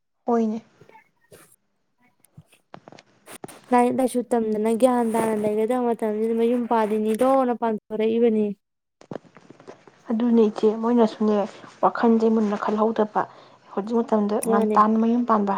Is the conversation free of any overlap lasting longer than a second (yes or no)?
yes